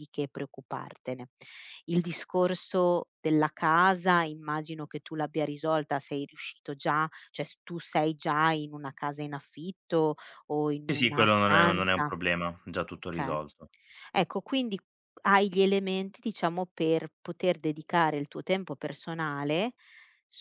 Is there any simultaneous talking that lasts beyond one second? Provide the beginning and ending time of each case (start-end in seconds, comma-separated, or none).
10.9-12.1